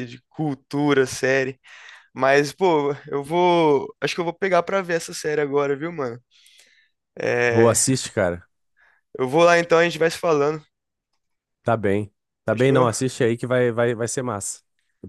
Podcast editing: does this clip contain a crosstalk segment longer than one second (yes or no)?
no